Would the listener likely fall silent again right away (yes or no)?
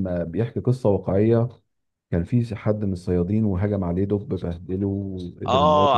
no